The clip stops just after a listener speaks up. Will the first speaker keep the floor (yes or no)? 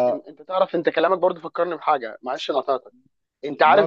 yes